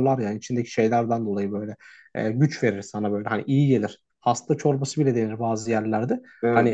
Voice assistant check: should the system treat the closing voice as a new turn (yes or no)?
no